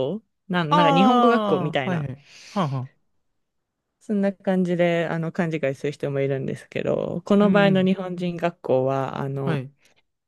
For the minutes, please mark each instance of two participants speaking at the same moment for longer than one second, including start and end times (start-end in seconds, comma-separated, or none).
0.7-2.1